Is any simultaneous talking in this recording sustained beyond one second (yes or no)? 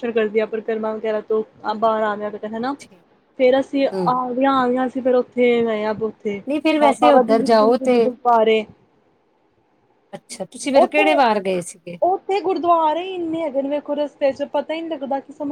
yes